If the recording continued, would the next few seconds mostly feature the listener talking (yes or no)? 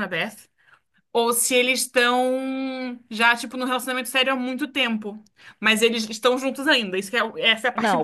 yes